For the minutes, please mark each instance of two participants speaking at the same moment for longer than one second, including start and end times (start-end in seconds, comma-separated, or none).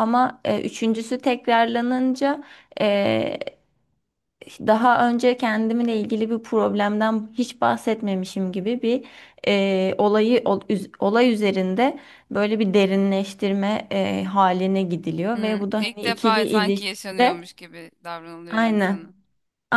15.3-17.5